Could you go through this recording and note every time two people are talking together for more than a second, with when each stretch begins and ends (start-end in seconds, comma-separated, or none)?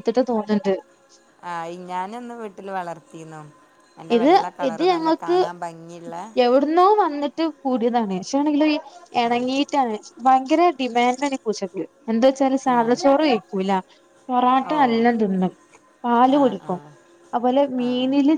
none